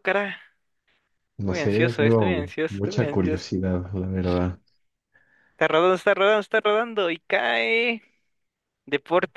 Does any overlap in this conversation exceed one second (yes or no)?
yes